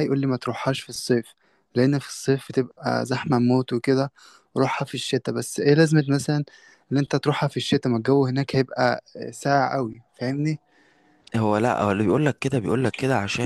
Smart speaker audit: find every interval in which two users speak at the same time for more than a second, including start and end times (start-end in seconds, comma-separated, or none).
none